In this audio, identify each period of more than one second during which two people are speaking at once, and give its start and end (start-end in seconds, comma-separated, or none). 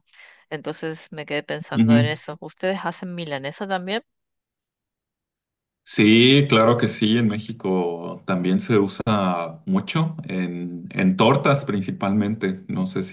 none